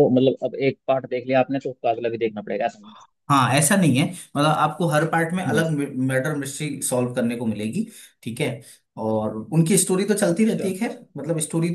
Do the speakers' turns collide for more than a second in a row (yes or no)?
no